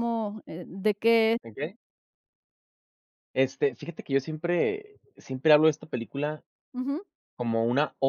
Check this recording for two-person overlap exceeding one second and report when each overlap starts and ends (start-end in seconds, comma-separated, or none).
none